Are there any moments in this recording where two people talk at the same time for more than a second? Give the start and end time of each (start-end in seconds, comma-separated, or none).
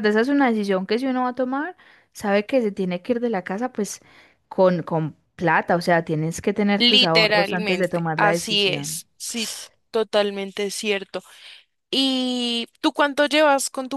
6.8-9.0